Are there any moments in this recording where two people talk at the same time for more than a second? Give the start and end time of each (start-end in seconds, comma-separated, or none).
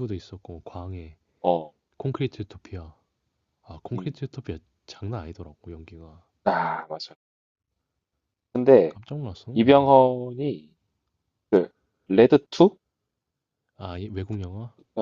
none